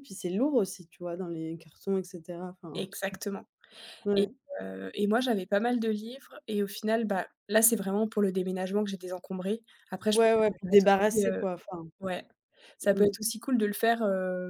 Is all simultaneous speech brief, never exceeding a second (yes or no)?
no